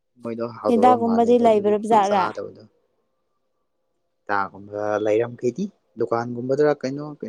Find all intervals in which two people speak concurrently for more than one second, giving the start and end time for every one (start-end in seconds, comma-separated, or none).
0.7-2.2